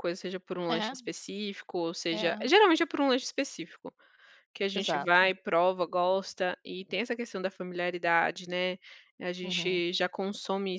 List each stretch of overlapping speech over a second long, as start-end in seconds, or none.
none